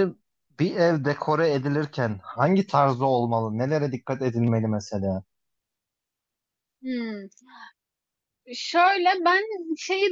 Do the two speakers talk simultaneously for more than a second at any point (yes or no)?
no